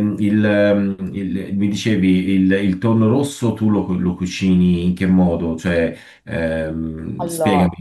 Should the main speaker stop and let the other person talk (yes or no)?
yes